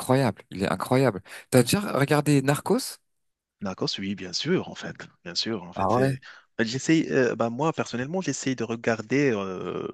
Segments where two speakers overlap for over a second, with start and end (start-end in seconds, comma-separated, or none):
none